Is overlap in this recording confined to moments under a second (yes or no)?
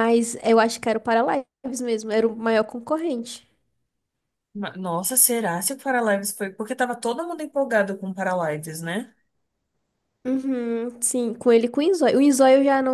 yes